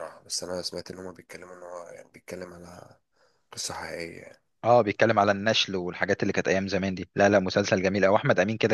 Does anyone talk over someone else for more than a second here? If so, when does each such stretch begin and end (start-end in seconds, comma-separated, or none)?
none